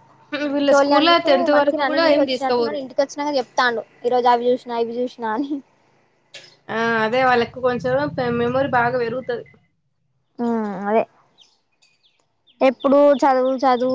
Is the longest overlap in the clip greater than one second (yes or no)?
yes